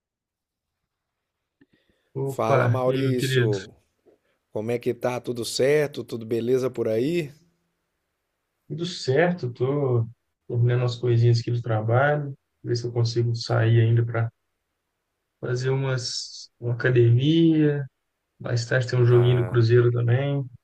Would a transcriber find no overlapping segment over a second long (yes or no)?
no